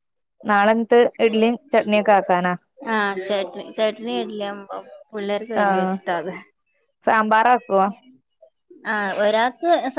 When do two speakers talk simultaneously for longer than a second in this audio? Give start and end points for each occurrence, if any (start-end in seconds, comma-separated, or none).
none